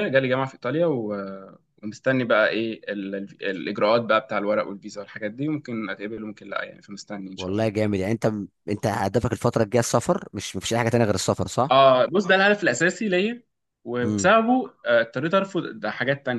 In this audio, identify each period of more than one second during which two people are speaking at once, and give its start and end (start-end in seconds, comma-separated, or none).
none